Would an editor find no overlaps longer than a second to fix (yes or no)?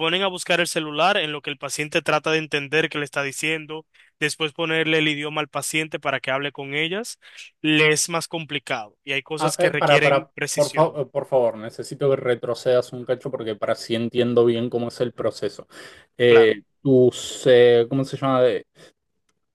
no